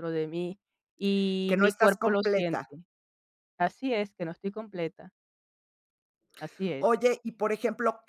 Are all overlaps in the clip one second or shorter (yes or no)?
no